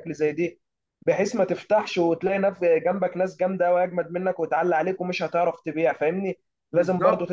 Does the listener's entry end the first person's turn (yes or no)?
no